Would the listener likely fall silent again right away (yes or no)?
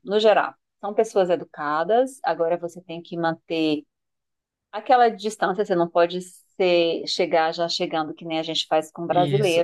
no